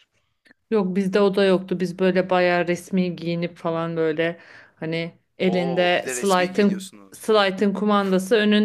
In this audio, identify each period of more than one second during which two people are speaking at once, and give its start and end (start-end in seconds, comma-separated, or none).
5.4-7.4